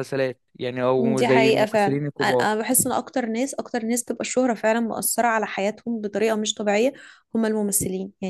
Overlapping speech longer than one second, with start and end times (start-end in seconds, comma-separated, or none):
1.2-2.5